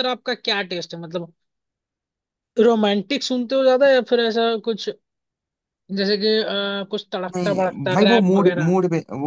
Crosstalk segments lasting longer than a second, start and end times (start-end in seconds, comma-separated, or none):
7.3-8.7